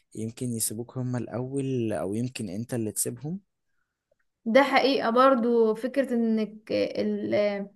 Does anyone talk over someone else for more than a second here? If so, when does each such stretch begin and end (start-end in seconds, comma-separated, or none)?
none